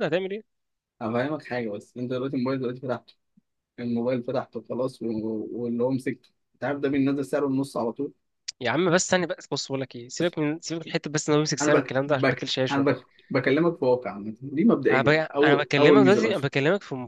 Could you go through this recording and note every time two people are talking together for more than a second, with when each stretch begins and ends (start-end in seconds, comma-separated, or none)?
11.6-13.0, 14.9-16.5